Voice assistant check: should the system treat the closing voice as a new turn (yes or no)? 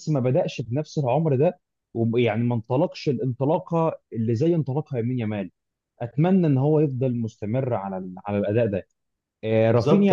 yes